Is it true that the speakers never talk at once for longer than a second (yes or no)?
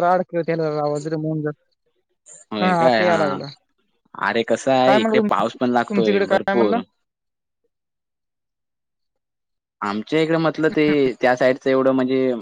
no